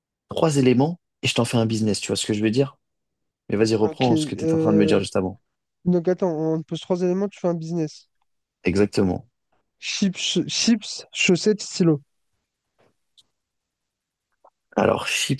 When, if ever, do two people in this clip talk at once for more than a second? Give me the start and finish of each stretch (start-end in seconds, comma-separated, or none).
3.8-5.0